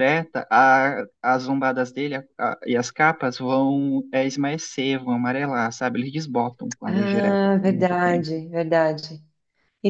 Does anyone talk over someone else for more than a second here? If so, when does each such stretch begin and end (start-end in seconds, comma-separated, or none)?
6.9-8.3